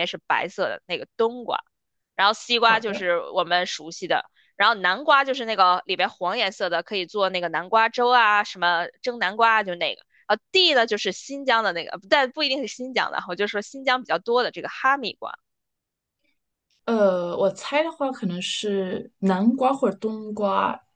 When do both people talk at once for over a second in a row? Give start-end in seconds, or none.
none